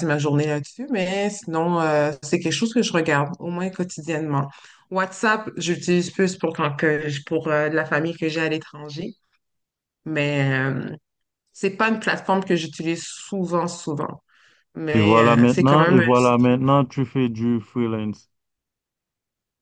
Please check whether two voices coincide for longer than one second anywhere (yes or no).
yes